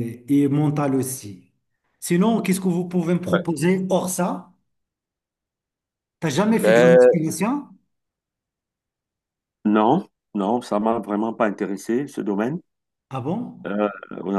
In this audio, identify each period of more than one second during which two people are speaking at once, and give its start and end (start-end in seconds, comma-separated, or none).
none